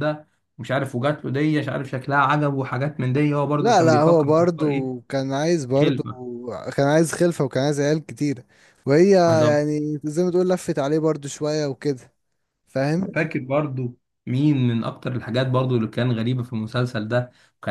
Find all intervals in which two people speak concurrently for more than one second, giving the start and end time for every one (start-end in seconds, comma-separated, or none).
3.6-4.9